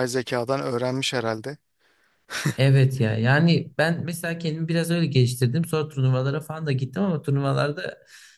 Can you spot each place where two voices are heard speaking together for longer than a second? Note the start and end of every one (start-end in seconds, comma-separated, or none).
none